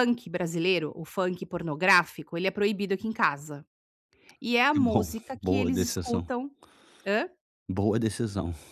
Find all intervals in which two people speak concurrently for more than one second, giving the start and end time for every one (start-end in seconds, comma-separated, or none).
4.7-6.3